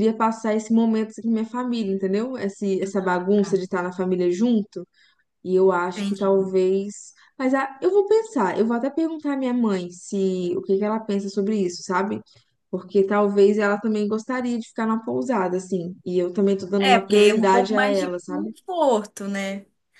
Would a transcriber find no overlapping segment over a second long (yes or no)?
no